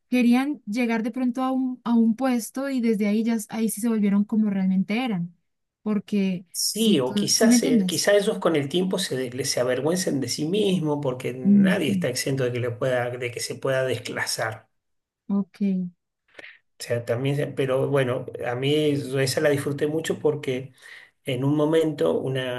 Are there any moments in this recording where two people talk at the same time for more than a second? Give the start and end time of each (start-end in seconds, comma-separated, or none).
6.5-8.1